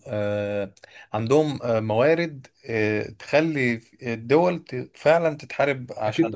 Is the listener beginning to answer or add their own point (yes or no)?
yes